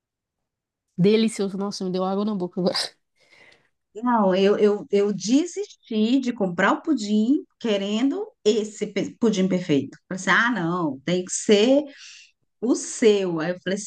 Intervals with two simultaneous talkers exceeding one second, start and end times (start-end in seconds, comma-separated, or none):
none